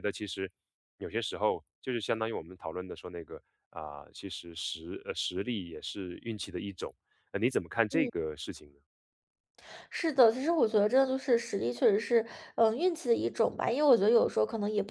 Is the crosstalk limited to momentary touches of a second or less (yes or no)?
yes